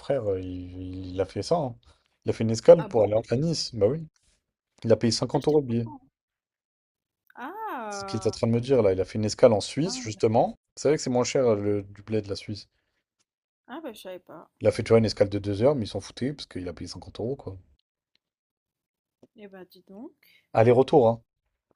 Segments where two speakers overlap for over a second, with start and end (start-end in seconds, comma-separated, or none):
none